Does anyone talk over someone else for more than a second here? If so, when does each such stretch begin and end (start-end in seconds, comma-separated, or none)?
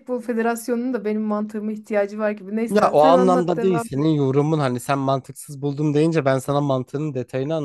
2.7-4.1